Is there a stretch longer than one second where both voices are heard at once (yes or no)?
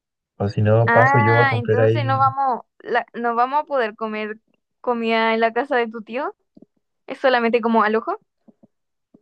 yes